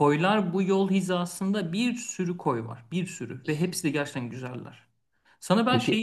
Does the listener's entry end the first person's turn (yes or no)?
no